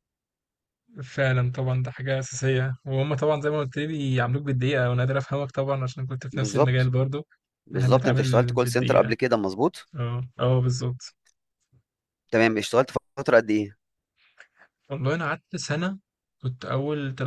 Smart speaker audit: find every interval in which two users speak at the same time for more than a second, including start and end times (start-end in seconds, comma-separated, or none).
7.8-9.1